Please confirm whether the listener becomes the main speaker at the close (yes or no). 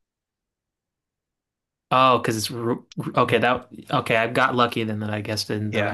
yes